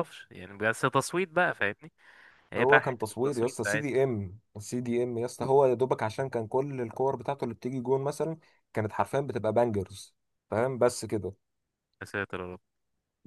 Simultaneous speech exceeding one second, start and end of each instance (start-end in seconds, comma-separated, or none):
2.6-3.8